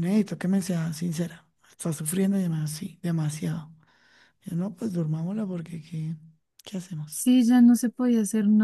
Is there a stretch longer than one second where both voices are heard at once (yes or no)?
no